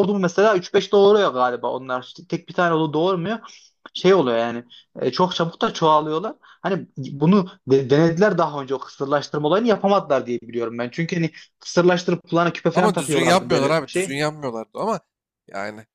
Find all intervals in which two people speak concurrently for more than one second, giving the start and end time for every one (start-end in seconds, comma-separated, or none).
12.7-14.2